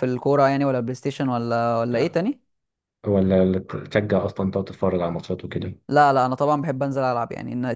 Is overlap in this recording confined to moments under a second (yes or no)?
yes